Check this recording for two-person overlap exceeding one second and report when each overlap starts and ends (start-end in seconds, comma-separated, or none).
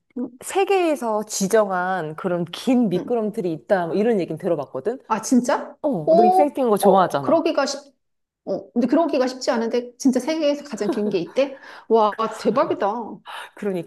5.8-7.5